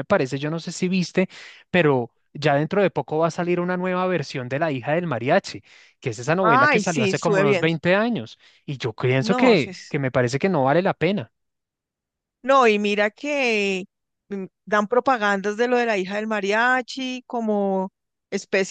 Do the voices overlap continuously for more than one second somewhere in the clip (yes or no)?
yes